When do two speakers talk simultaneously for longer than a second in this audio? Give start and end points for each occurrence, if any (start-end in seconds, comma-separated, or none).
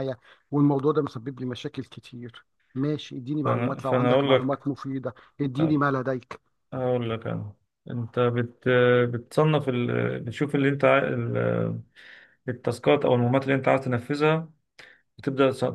3.4-4.7